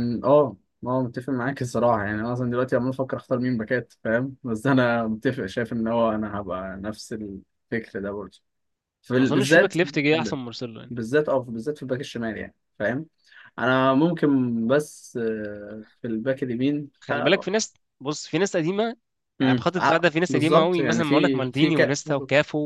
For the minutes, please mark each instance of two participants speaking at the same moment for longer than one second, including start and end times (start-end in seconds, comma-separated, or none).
19.4-22.0